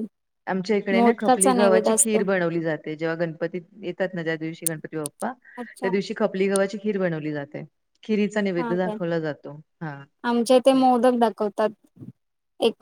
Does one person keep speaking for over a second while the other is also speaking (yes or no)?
yes